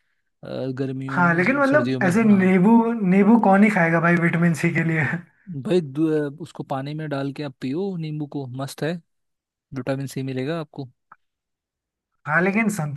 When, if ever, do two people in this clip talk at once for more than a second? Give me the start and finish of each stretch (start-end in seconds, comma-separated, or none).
1.1-2.6